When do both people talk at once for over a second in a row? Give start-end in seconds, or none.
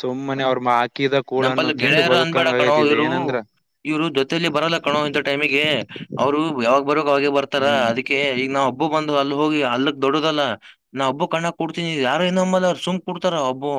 1.4-3.1